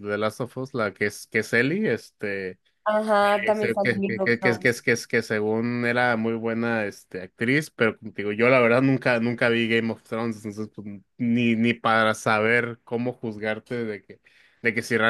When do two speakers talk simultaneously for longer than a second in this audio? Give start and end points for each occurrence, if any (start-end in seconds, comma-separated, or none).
3.5-4.7